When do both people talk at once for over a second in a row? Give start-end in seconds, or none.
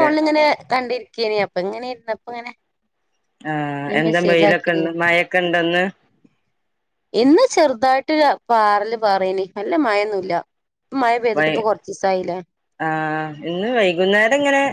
none